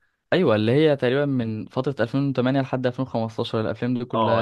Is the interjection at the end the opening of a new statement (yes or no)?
yes